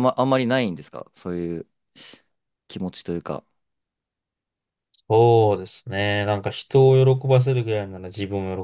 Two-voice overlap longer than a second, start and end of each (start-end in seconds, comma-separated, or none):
none